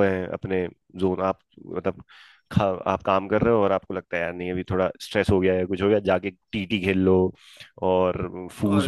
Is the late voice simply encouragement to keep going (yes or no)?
yes